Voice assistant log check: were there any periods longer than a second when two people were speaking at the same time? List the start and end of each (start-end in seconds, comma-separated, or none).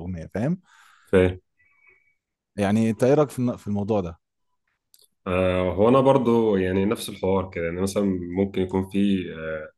none